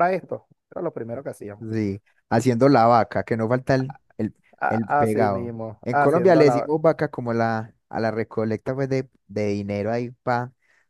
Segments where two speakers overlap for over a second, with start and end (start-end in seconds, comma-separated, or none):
4.6-6.7